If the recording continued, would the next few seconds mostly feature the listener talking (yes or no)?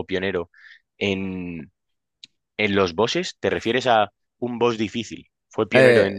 yes